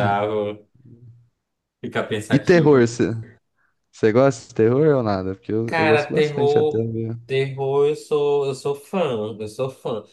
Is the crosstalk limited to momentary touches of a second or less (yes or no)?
no